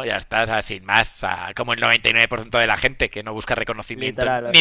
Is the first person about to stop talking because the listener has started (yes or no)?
no